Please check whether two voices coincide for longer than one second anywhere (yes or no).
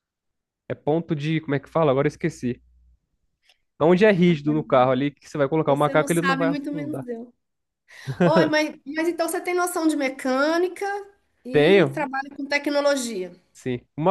yes